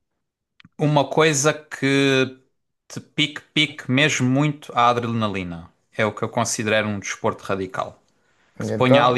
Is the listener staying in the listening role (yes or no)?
yes